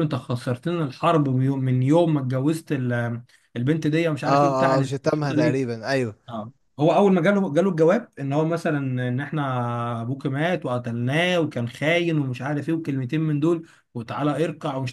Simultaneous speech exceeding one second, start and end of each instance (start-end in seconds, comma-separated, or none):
none